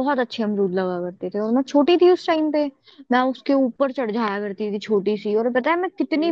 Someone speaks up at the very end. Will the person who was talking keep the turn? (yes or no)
yes